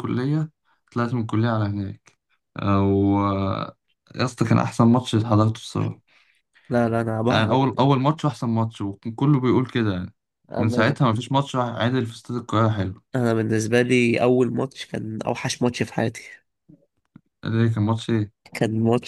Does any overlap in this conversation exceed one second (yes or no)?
no